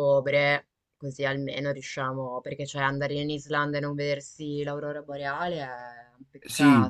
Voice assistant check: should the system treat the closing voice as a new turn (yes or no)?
yes